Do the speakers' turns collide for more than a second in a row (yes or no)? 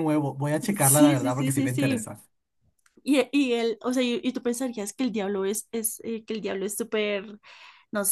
yes